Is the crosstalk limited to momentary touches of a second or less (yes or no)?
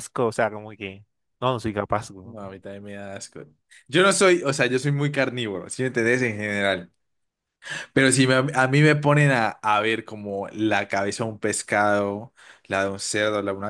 yes